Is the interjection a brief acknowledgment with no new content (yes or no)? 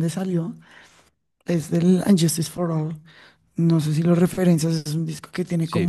yes